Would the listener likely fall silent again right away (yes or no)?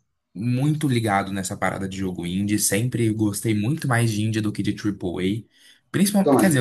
yes